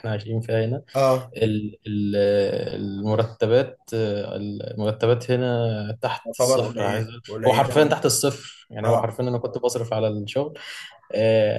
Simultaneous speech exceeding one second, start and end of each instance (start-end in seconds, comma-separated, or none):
6.2-8.0